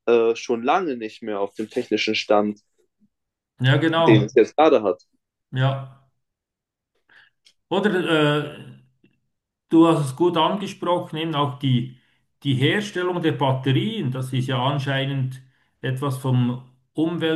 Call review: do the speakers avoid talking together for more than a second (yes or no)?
yes